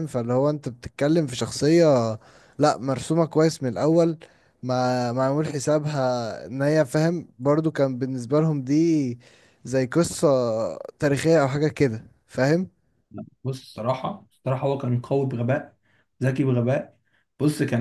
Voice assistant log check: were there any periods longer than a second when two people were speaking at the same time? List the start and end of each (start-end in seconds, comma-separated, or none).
none